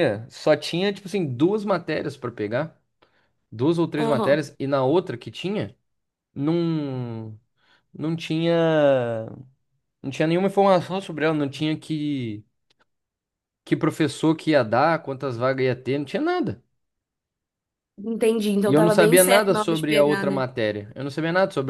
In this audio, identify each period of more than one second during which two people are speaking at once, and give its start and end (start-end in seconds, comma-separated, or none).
18.7-20.4